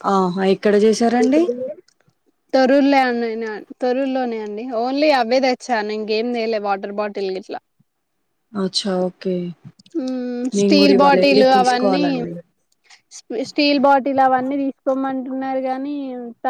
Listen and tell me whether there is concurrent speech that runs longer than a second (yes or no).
yes